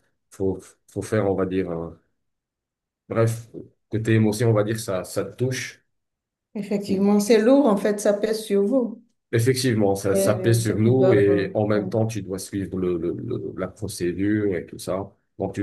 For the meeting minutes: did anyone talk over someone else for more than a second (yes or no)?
yes